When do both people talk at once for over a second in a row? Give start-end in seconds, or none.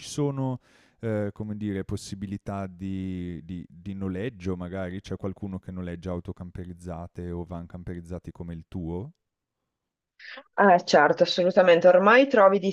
none